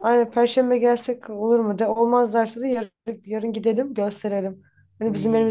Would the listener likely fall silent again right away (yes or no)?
yes